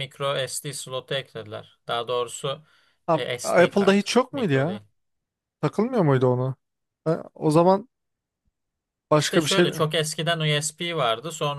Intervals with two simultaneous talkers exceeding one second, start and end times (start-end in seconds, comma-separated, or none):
3.1-4.8